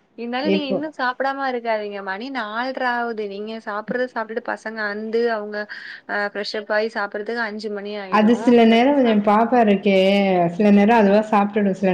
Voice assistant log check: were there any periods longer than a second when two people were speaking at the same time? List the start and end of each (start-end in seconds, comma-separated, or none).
none